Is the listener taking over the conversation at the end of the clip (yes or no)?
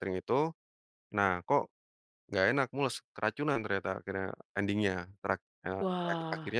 no